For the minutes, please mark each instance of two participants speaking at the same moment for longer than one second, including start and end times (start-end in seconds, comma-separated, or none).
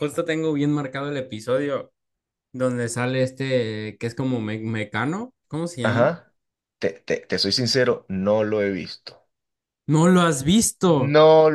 none